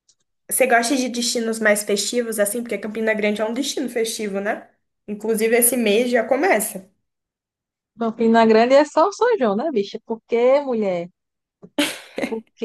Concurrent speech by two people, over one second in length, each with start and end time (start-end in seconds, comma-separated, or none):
none